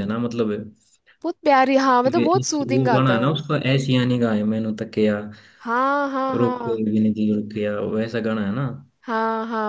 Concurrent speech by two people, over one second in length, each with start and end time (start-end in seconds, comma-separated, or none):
2.1-3.4